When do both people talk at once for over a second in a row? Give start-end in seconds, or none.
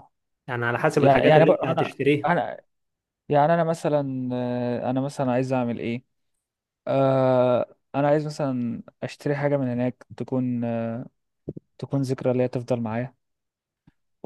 0.9-2.3